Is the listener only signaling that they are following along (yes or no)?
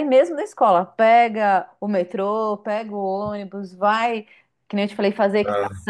yes